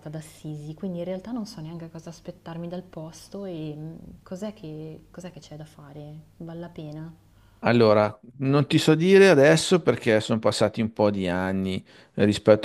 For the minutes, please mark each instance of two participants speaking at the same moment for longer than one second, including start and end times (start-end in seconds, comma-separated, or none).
none